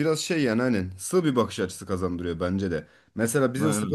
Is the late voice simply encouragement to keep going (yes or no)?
yes